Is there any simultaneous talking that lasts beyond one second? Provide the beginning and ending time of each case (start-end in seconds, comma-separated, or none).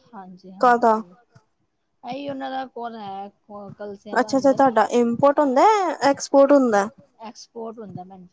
none